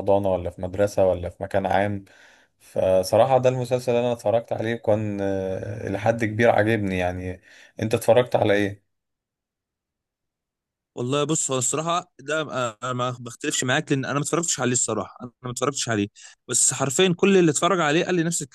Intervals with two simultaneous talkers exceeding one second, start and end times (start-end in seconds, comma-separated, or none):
none